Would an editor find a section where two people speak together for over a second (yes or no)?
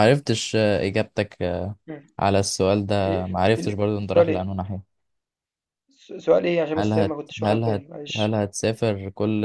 yes